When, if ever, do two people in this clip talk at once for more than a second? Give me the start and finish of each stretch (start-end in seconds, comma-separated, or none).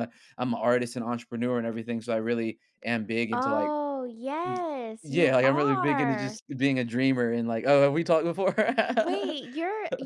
5.0-6.4